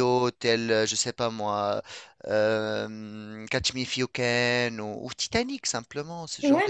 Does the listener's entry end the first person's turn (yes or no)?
yes